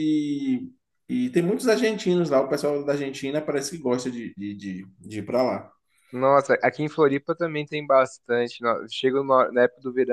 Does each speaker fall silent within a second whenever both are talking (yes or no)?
yes